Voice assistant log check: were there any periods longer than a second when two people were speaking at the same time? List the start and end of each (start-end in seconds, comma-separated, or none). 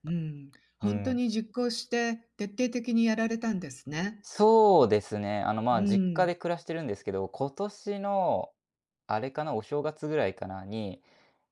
none